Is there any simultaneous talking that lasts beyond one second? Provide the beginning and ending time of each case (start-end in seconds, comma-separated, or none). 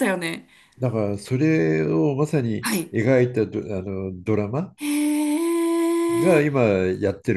none